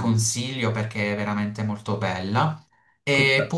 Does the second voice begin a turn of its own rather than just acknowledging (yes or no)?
no